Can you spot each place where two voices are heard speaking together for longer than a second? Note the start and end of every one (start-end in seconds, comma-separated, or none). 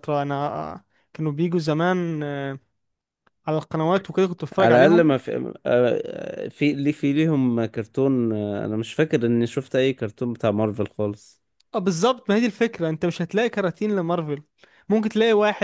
none